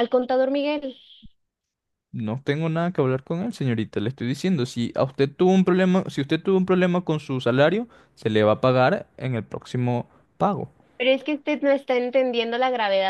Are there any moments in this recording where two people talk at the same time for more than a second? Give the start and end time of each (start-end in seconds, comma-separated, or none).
none